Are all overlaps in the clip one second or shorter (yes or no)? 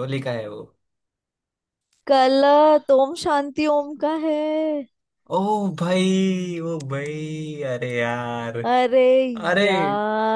yes